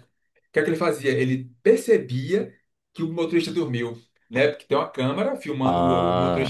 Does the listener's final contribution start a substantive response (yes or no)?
no